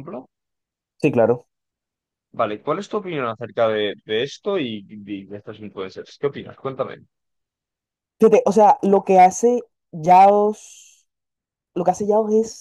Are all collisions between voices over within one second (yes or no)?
yes